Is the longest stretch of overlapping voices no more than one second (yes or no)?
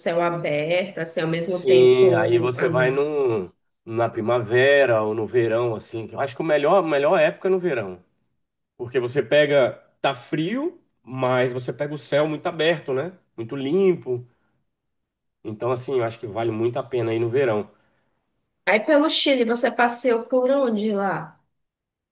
no